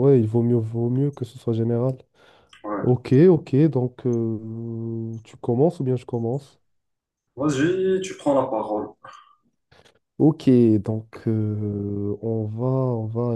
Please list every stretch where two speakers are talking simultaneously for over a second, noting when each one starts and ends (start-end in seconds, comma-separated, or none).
none